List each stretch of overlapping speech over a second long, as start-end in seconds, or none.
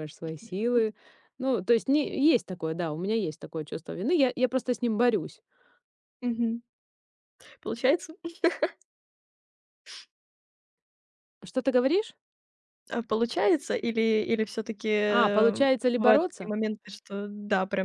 15.1-16.5